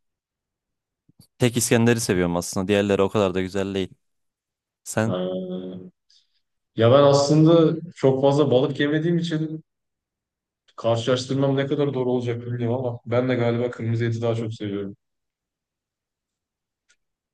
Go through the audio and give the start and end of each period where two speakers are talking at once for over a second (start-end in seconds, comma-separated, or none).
none